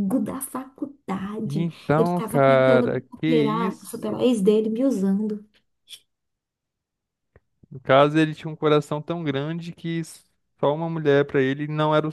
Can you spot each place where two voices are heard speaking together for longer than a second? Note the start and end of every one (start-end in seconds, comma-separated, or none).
1.4-4.3